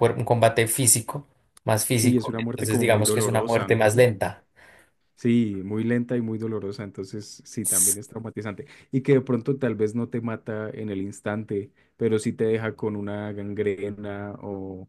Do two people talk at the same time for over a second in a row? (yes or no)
yes